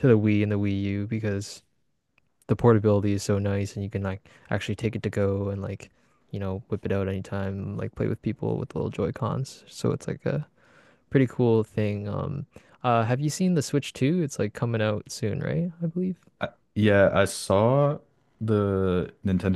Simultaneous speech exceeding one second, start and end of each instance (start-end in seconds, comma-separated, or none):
none